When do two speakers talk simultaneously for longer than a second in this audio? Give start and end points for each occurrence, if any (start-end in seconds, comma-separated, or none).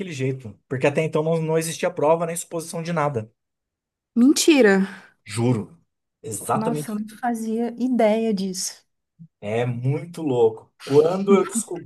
none